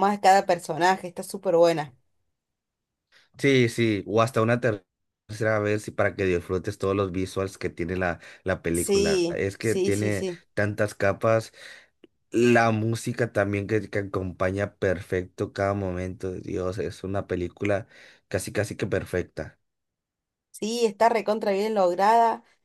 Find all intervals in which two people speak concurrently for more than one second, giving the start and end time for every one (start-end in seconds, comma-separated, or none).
8.7-10.4